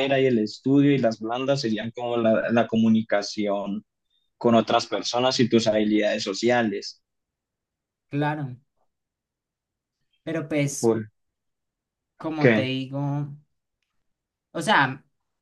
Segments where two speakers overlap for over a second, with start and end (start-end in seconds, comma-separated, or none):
none